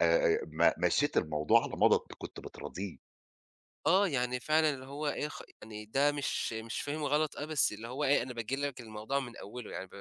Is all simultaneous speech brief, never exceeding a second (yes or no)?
yes